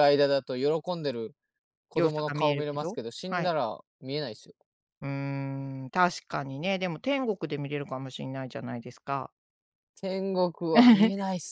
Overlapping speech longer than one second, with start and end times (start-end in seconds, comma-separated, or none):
1.9-3.5